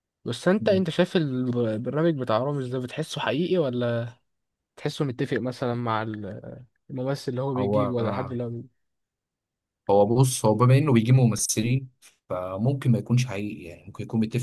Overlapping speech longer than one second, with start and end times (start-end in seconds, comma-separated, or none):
none